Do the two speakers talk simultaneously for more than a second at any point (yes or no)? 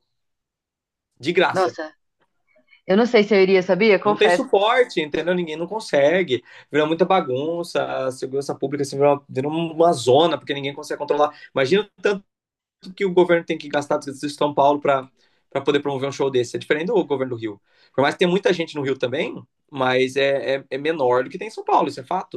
no